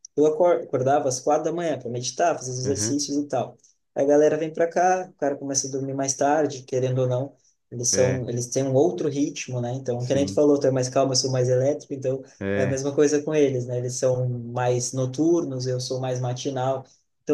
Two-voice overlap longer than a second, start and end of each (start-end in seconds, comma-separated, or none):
none